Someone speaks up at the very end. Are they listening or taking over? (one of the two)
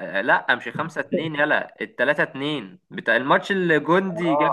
taking over